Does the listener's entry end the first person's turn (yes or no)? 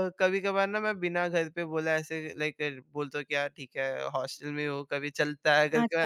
yes